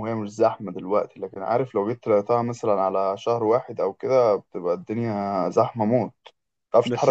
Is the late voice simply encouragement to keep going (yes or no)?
no